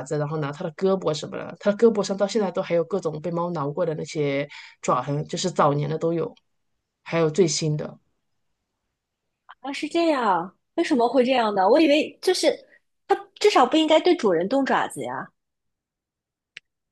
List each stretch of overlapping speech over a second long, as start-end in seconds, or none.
none